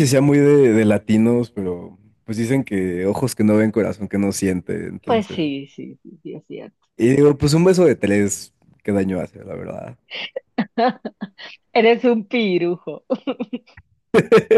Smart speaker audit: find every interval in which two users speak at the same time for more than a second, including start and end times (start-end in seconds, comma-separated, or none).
none